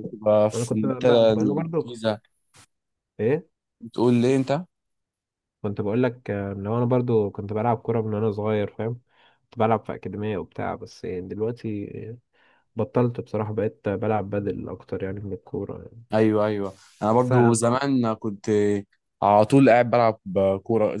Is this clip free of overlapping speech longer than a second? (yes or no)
no